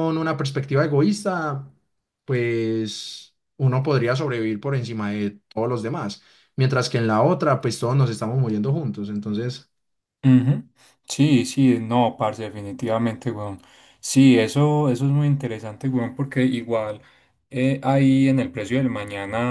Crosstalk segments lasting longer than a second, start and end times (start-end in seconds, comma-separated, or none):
none